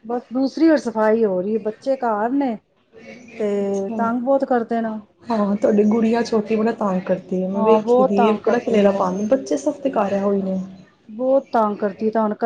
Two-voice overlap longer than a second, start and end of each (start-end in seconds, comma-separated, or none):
7.5-9.0